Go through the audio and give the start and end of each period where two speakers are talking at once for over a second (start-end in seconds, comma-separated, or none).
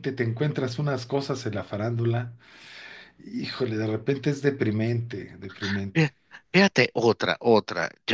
none